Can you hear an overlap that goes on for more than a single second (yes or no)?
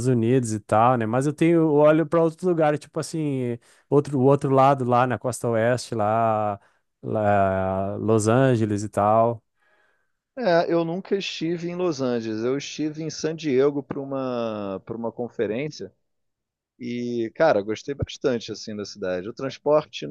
no